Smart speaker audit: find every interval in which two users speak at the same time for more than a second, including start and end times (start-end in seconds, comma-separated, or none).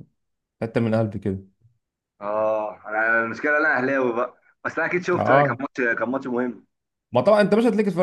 none